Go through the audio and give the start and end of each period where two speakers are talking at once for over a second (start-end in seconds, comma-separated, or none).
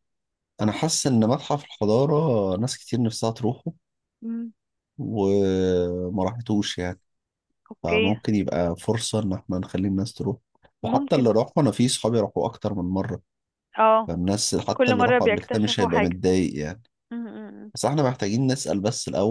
14.7-16.2